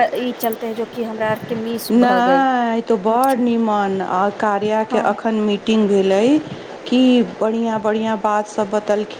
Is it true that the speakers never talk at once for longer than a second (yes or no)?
yes